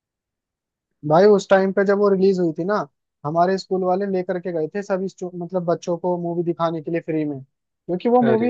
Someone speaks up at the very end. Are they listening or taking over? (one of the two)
listening